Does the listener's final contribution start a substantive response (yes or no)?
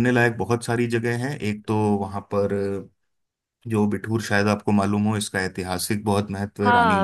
yes